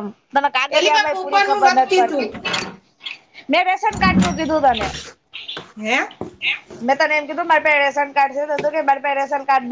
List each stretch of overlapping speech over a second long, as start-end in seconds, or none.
0.8-2.4